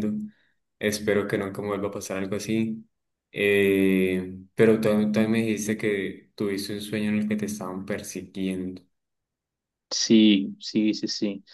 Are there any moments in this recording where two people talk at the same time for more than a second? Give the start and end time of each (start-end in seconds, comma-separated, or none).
none